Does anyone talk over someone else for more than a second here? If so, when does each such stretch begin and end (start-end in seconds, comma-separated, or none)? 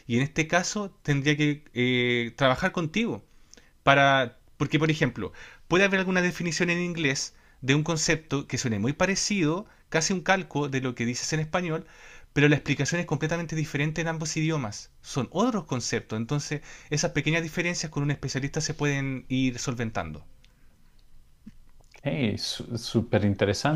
none